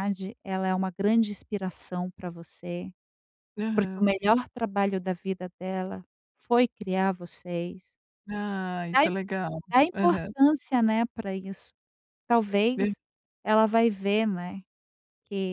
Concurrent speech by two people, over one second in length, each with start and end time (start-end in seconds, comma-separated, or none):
none